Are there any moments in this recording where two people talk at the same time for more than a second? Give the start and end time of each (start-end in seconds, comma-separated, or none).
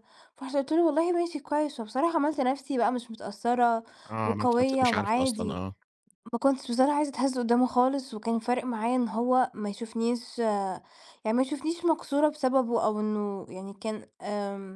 4.2-5.6